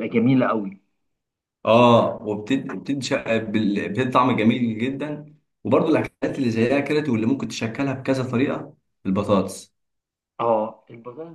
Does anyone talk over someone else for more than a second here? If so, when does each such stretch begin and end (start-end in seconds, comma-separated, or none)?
none